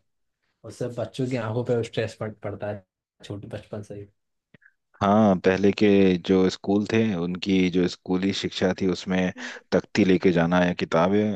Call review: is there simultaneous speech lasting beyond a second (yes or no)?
no